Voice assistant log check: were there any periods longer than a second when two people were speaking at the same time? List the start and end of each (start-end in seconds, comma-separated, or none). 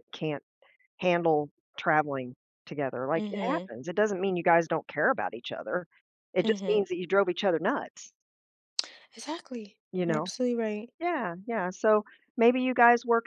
none